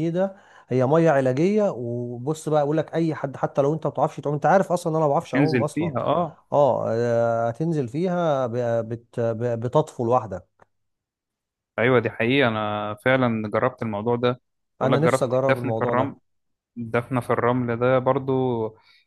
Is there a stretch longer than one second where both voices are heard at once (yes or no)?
yes